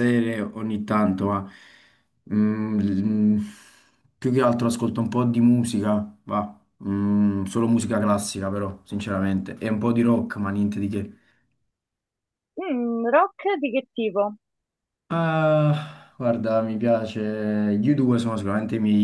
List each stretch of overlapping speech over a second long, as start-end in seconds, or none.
none